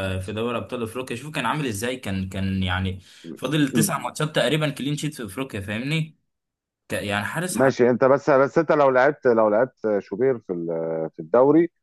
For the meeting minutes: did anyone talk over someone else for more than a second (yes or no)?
no